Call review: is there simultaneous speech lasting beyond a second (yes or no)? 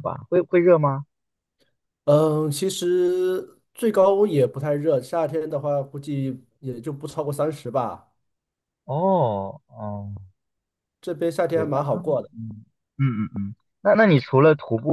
no